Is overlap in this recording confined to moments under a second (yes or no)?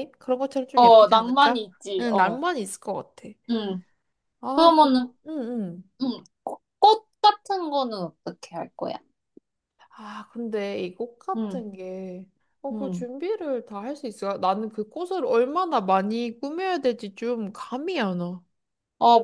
no